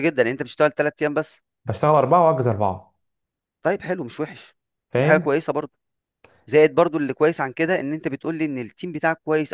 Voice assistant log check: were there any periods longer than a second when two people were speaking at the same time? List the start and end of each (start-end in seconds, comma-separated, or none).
none